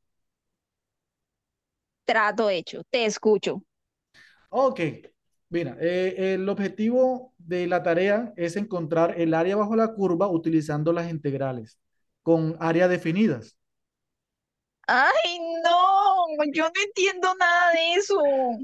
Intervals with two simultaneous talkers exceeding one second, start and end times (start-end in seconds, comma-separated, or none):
none